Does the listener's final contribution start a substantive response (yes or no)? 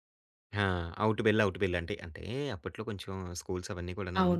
yes